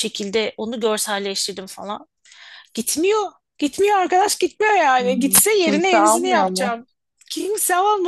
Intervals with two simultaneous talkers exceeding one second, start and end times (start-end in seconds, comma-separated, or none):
5.0-6.8